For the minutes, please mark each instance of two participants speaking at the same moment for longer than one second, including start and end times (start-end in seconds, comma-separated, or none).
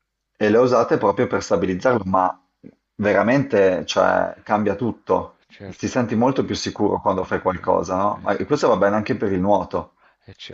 7.2-8.7